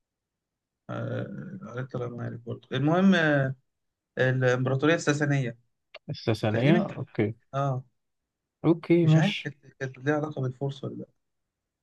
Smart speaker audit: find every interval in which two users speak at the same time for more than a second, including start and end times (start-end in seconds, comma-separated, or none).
none